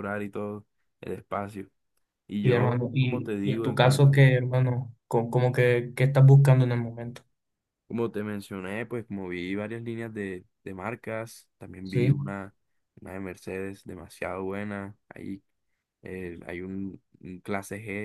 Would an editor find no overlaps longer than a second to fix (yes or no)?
no